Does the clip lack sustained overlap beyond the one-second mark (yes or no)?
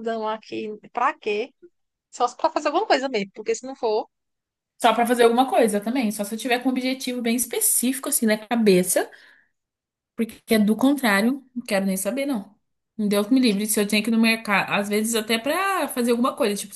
yes